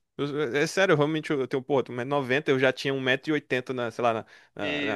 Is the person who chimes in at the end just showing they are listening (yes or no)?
yes